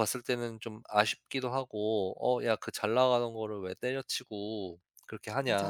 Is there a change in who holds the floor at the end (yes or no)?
yes